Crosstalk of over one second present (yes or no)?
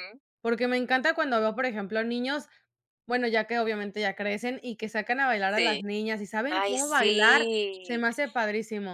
yes